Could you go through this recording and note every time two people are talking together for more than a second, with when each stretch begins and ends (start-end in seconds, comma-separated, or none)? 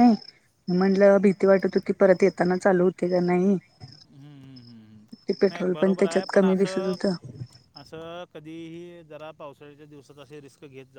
5.5-6.9